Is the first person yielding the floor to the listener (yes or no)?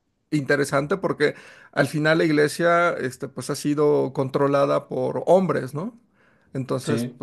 no